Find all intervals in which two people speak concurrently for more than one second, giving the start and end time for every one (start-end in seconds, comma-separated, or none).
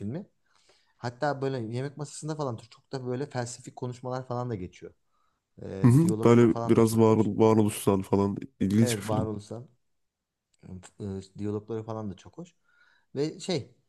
5.8-7.3